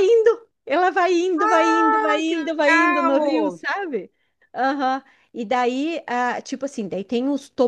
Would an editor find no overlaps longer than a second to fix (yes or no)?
no